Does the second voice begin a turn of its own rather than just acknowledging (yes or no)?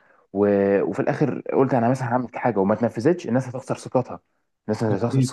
no